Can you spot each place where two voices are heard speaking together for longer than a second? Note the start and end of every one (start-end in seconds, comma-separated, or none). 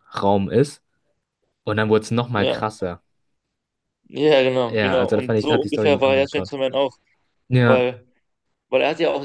4.7-6.6